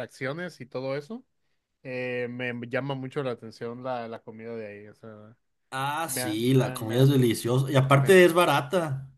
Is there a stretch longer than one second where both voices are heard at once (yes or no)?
yes